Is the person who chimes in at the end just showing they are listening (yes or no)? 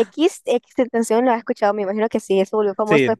no